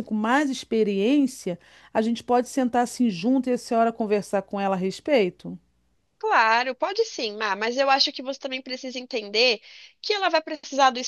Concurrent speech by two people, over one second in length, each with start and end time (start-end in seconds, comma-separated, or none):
none